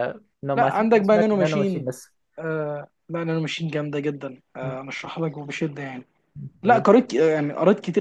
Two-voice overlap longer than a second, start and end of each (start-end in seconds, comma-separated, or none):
0.5-1.9